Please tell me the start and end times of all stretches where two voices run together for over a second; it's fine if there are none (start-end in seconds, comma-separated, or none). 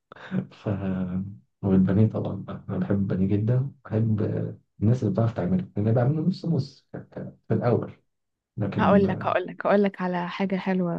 none